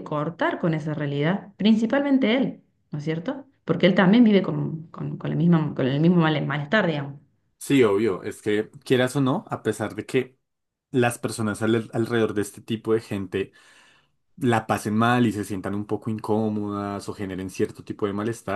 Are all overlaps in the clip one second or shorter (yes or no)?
yes